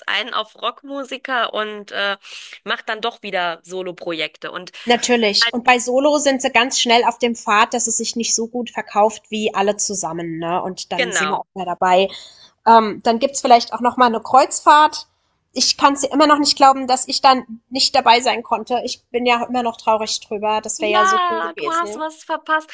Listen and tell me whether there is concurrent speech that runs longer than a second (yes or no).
yes